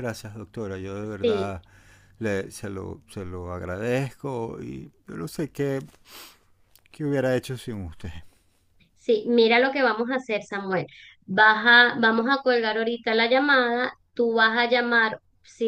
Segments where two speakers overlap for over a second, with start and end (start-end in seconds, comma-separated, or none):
none